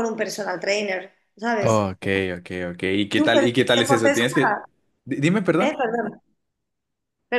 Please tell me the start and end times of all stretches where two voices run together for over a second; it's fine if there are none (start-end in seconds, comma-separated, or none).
3.1-4.6